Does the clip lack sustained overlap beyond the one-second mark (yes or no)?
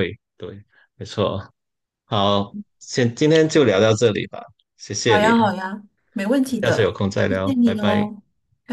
no